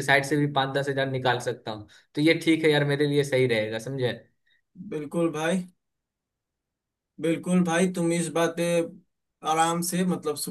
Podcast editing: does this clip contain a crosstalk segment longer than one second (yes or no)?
no